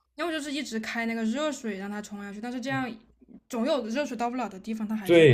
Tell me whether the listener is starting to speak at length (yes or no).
yes